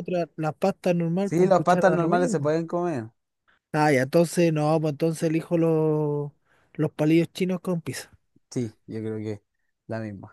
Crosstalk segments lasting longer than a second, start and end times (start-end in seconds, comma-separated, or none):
1.2-2.5